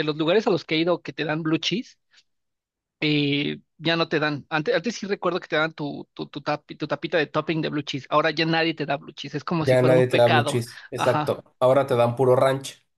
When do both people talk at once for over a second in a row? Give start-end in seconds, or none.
9.7-11.4